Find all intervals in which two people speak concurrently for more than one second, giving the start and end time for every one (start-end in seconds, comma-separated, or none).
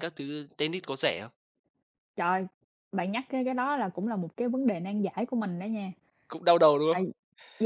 none